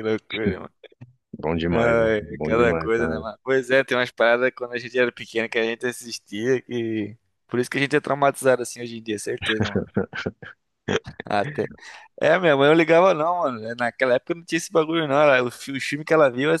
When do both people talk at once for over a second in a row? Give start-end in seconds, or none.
1.7-3.3